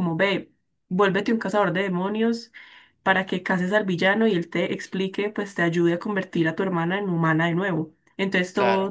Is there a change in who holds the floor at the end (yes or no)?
no